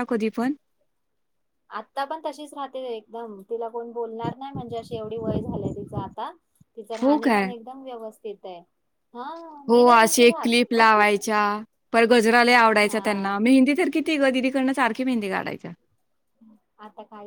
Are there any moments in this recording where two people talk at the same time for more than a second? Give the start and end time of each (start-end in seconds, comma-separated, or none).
9.7-11.0